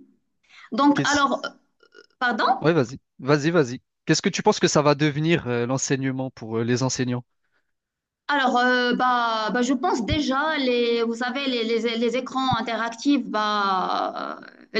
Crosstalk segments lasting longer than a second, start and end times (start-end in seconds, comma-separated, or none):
none